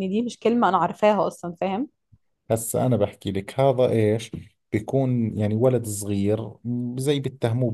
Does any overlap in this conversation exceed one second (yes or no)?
no